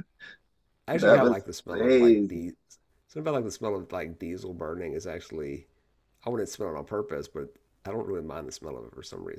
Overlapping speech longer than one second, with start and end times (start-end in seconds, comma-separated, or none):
0.9-2.5